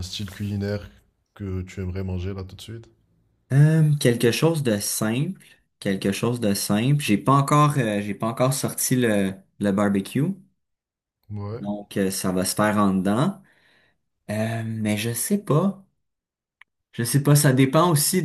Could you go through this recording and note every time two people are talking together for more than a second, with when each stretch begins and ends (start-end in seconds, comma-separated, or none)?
none